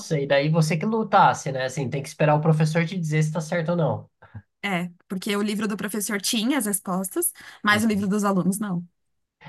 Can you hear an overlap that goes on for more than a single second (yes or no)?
no